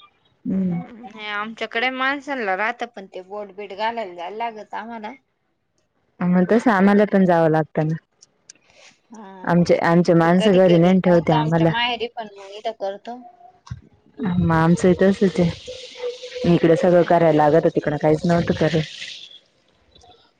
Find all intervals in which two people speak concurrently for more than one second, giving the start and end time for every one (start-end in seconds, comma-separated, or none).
10.2-11.7